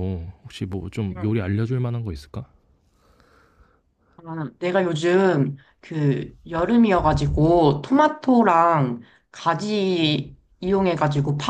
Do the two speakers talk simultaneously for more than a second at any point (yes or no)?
no